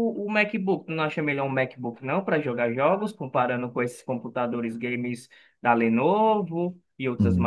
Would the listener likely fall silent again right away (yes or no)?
no